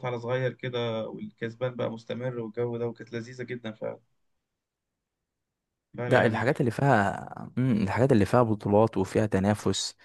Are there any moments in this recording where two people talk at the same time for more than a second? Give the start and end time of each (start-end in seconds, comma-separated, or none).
none